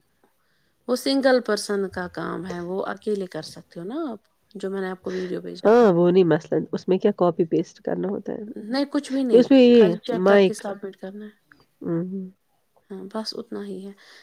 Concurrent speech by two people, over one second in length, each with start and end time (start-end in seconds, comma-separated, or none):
8.6-11.4